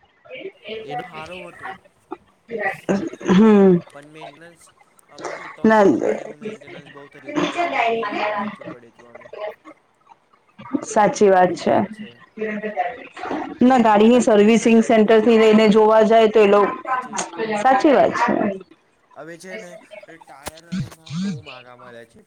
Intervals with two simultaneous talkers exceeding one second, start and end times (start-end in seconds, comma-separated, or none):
13.7-16.1